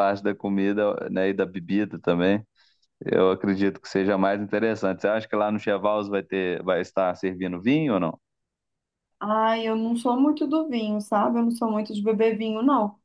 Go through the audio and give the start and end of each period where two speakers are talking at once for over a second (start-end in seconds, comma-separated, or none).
none